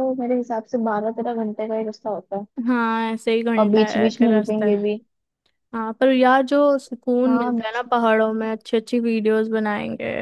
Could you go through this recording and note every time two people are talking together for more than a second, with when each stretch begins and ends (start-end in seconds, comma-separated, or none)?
3.6-4.8, 7.3-8.5